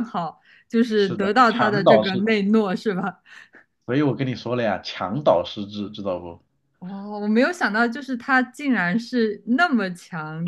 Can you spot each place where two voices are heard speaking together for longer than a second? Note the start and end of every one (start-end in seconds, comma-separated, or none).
0.9-2.2